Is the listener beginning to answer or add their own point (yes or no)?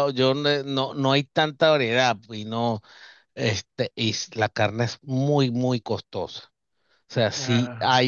no